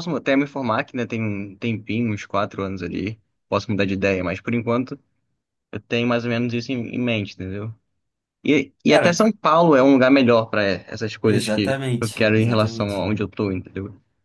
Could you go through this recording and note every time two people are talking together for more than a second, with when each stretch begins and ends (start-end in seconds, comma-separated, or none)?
11.2-13.1